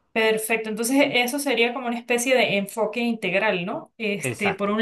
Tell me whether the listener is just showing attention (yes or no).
yes